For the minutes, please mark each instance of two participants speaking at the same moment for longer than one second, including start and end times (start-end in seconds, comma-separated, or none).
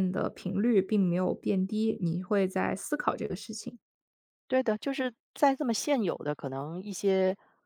none